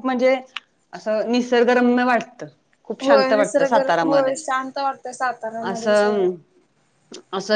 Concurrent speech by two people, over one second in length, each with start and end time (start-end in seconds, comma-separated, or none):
3.0-4.3